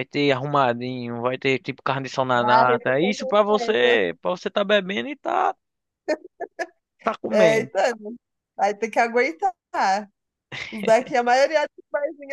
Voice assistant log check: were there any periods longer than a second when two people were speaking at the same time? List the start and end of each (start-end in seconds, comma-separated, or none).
2.5-4.0